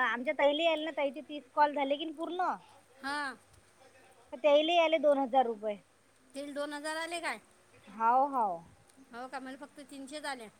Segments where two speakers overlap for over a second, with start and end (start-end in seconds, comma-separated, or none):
none